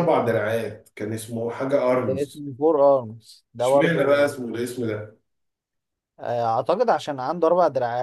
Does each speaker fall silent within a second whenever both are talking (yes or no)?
yes